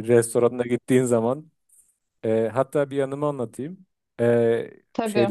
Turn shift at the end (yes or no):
no